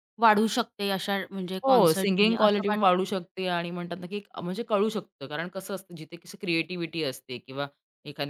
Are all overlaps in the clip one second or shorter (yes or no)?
no